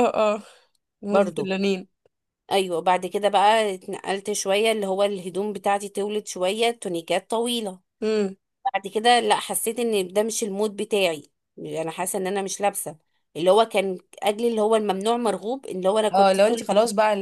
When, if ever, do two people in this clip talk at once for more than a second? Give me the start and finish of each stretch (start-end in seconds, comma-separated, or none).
none